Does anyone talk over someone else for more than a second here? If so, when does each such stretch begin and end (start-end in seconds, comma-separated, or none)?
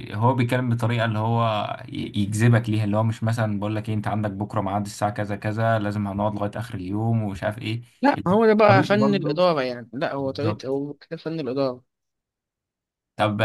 8.2-9.4